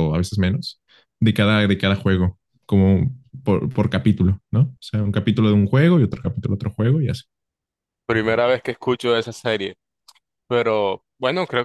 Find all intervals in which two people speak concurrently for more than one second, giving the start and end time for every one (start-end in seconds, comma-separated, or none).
none